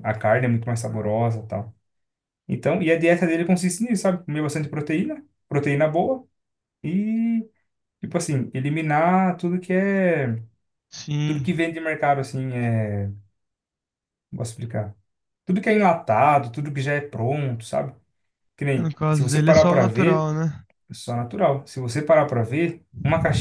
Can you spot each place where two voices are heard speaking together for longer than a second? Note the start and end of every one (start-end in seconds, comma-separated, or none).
18.8-20.3